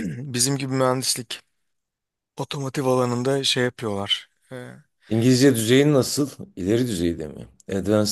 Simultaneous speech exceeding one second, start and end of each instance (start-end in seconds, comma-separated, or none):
none